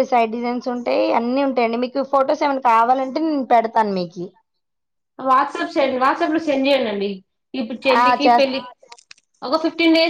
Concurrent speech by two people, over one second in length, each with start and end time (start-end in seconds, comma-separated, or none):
none